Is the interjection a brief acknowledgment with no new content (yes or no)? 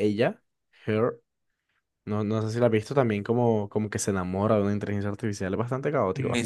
no